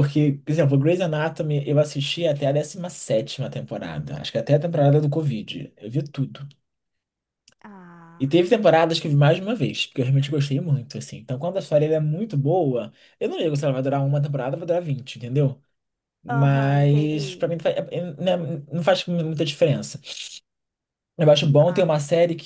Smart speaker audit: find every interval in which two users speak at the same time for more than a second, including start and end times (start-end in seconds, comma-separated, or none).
16.3-17.5